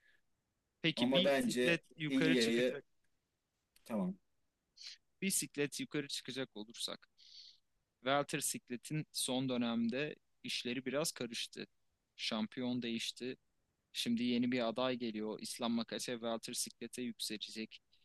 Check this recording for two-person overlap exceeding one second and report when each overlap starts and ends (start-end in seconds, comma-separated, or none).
0.9-2.8